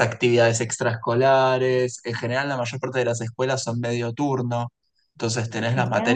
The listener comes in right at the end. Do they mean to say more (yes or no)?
no